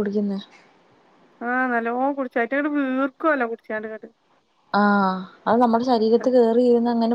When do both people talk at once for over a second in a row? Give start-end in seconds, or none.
none